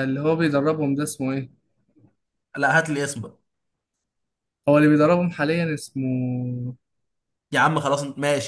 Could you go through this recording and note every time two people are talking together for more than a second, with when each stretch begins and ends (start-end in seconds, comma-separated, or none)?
none